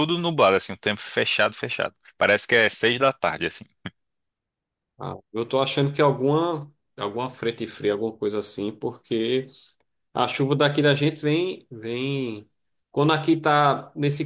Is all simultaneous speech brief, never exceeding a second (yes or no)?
yes